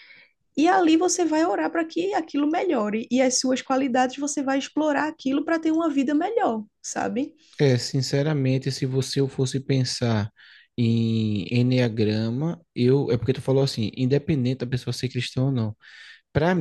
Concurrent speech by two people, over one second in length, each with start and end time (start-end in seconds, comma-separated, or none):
none